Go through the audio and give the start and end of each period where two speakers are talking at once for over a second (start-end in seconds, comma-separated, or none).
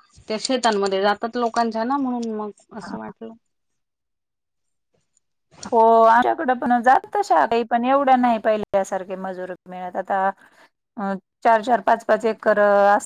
none